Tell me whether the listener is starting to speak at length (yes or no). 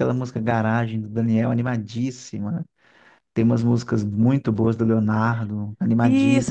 yes